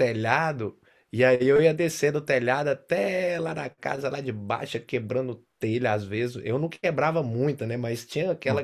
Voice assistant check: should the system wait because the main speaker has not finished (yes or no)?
yes